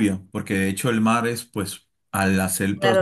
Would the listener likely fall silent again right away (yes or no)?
no